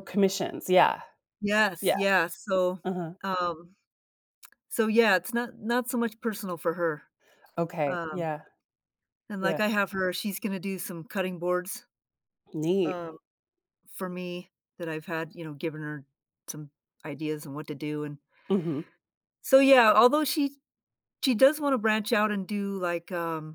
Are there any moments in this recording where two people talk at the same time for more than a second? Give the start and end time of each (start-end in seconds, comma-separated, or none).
none